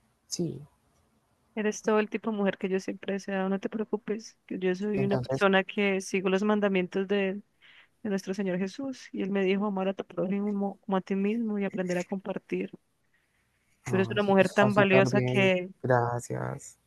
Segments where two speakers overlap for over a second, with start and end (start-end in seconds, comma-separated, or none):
13.9-15.3